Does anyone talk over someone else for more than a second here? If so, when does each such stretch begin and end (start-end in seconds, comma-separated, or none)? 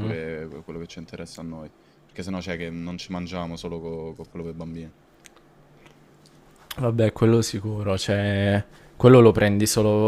none